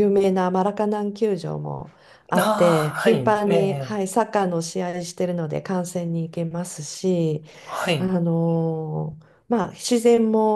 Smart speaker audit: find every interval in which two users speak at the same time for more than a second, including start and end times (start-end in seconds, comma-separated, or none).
2.4-4.0